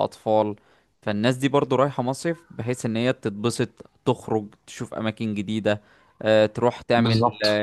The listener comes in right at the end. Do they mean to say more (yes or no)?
no